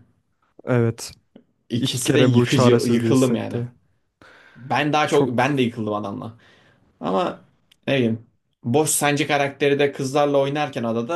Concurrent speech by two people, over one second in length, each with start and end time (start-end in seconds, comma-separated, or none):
1.8-3.6